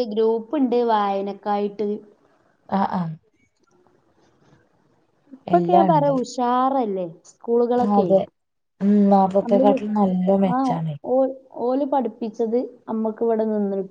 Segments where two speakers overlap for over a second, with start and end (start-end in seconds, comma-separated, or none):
none